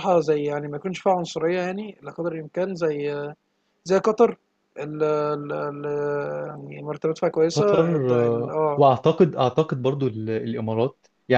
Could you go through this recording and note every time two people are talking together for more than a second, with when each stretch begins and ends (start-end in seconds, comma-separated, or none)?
7.5-8.8